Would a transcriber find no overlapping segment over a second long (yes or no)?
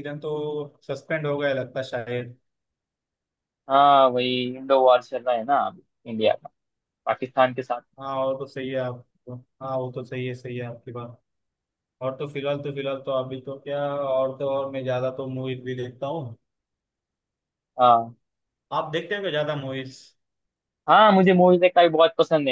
yes